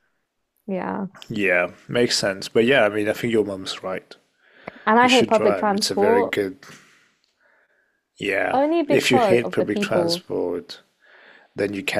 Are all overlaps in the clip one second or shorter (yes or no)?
no